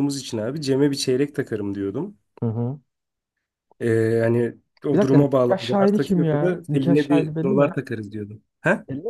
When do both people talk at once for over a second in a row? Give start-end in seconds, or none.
4.9-7.7